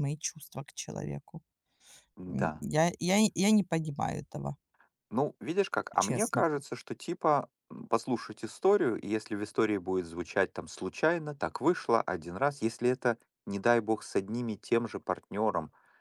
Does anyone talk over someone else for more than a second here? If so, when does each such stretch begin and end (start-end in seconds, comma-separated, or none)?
none